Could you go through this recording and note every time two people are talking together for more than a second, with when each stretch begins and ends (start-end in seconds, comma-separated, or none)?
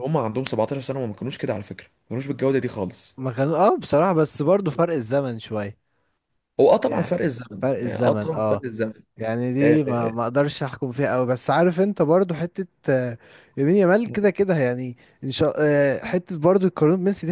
6.8-8.6